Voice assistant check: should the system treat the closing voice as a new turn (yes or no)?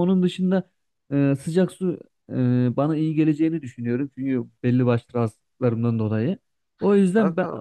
no